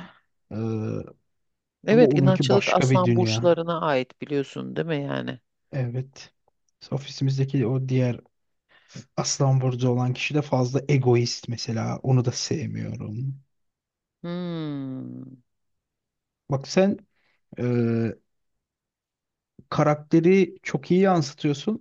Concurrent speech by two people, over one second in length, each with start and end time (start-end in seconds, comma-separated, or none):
1.9-3.6